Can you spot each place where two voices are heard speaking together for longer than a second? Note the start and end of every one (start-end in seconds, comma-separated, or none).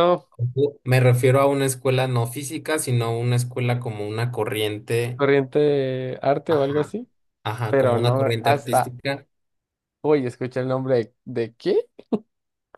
7.7-8.9